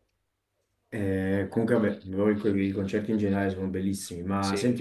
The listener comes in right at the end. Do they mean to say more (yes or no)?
no